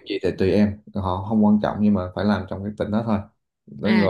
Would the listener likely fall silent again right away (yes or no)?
no